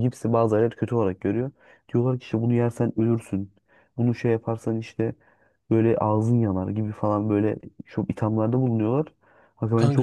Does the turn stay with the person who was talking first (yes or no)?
yes